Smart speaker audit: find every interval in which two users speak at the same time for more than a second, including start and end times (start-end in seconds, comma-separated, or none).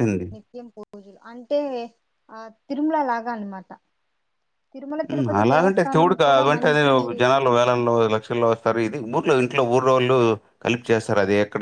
5.1-6.8